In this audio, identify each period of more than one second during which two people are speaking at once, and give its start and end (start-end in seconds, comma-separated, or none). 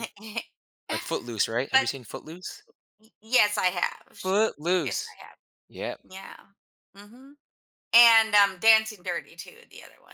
none